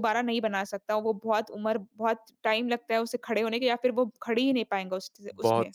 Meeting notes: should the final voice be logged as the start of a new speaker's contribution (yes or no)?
yes